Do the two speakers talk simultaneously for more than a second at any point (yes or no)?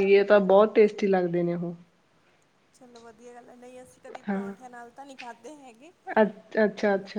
no